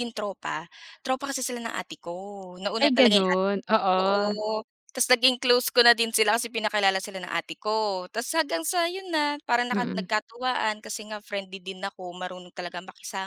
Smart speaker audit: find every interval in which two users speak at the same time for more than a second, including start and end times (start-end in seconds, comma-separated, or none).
2.8-4.3